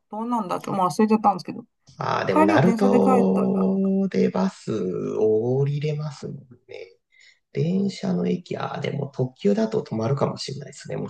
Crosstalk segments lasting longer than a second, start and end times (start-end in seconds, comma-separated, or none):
2.3-3.7